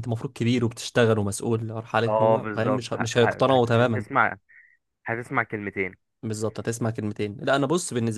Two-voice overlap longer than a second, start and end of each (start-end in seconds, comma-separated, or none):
2.1-4.0